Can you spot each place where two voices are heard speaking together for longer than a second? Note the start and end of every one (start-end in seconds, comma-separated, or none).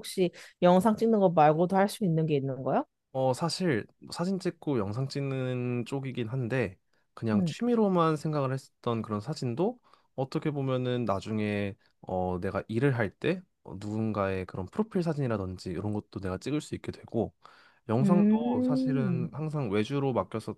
18.0-19.3